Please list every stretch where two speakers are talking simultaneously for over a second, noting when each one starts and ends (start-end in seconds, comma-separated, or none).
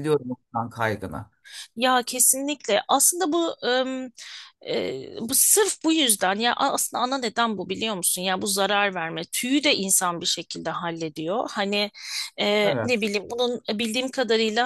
none